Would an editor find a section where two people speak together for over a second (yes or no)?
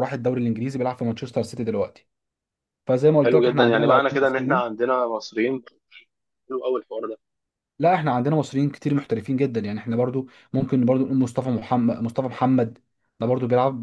yes